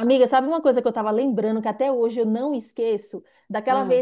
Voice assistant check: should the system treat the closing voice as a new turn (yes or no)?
no